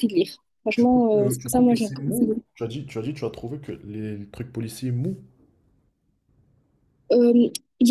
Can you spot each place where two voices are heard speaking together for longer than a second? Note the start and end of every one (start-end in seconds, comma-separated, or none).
0.7-2.4